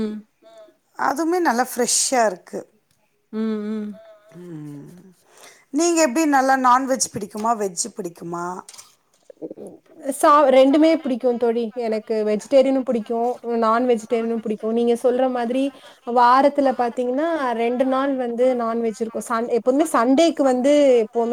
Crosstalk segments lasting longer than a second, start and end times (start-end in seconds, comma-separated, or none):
none